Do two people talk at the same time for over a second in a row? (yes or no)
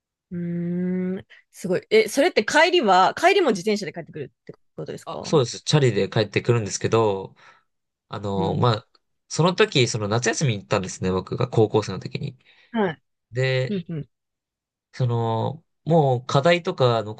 no